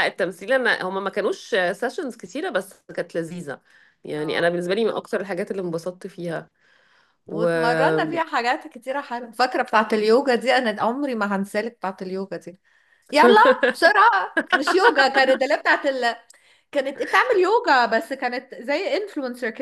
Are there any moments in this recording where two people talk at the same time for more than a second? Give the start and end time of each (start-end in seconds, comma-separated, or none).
none